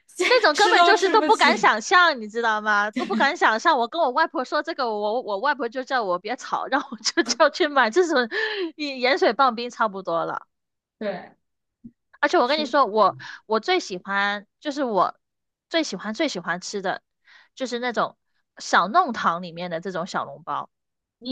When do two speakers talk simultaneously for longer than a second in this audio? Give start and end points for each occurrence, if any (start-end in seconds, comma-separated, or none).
0.5-1.8